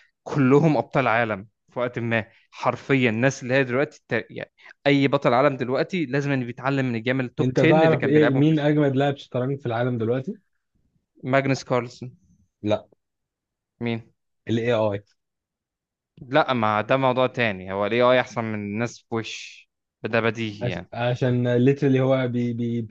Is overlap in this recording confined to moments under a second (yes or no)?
no